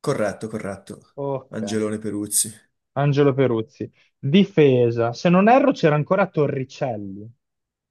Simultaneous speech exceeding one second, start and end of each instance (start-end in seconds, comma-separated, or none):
none